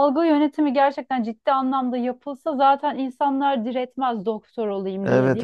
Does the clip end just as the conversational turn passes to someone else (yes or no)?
yes